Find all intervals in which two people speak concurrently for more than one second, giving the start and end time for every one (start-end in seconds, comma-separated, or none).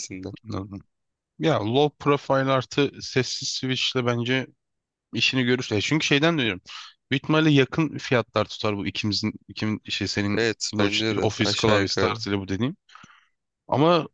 10.3-12.2